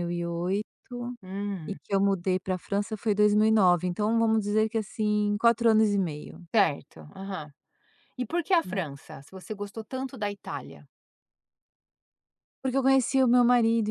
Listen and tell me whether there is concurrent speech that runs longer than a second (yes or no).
no